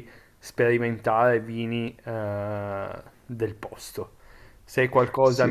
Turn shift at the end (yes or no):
no